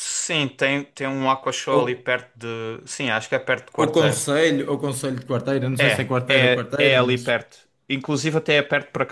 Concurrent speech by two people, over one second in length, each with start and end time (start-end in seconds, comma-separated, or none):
5.8-7.2